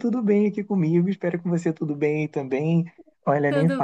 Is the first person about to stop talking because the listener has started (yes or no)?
no